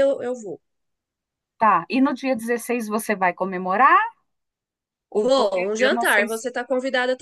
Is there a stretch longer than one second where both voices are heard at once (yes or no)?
yes